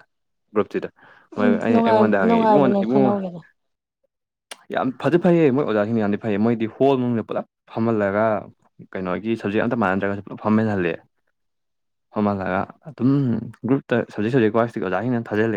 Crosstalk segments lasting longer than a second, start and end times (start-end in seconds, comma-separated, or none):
1.4-3.1